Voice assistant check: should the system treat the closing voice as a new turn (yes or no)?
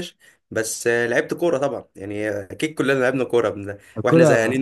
no